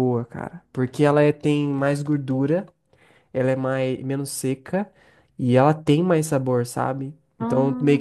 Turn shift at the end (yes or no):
no